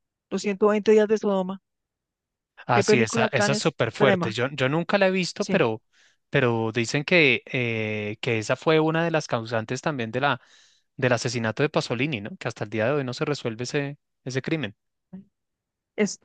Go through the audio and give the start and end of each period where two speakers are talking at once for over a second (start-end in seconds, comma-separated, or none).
2.8-4.4